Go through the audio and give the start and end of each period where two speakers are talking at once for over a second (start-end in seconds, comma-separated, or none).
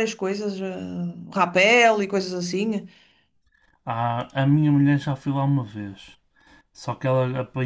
none